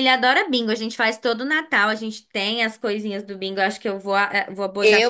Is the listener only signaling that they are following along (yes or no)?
no